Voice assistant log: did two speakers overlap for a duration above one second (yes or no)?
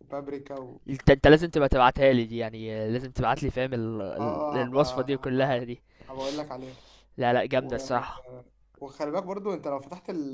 yes